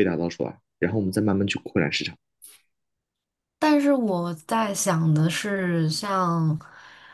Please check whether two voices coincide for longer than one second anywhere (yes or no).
no